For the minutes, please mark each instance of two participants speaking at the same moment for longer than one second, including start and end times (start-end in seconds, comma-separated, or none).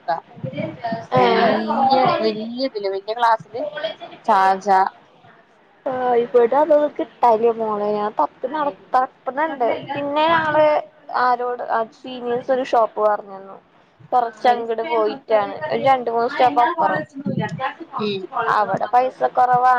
1.2-2.7